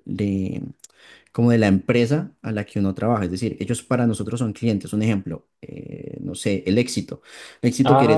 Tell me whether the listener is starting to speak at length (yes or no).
yes